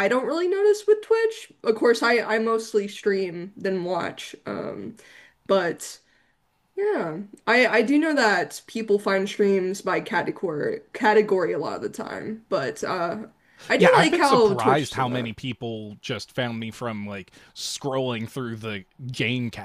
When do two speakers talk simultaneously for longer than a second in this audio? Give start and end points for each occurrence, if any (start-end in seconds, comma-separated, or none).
13.8-15.3